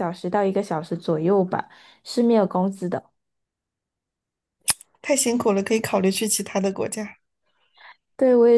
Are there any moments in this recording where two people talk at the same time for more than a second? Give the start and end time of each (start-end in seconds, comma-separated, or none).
none